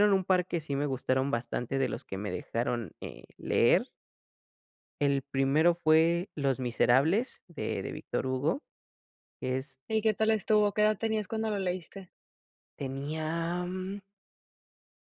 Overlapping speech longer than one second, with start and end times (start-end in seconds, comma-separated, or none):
none